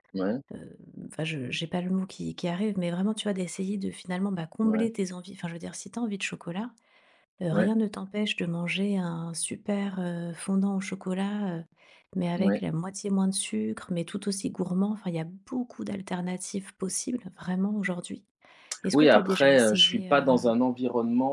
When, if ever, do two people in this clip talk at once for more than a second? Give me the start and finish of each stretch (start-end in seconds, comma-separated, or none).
18.9-20.5